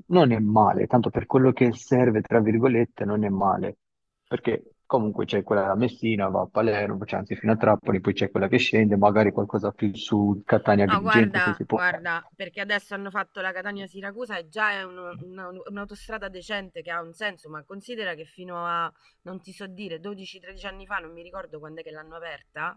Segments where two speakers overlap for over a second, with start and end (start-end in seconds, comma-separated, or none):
10.8-12.1